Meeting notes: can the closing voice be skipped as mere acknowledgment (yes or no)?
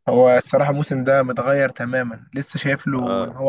yes